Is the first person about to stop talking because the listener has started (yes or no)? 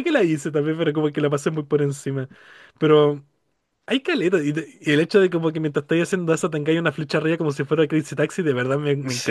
yes